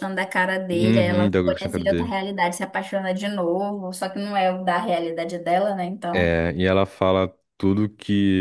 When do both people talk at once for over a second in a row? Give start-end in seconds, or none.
0.7-2.1